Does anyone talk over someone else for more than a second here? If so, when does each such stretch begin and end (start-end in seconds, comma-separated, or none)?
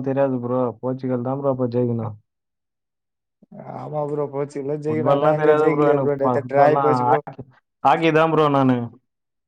4.9-7.2